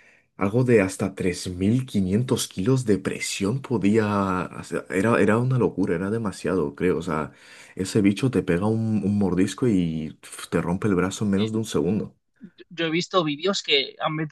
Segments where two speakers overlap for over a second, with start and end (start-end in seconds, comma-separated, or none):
none